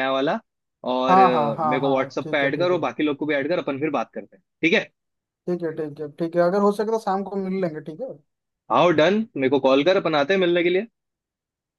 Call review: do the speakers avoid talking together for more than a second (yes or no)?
no